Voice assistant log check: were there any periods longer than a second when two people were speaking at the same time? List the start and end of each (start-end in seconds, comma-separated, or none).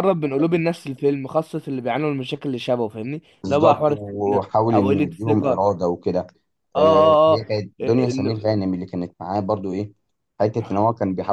3.4-5.7, 6.8-8.7